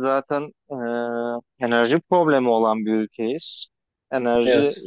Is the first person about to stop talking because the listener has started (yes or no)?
no